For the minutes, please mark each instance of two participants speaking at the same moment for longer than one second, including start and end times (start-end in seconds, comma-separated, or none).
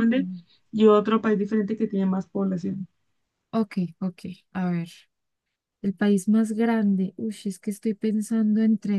none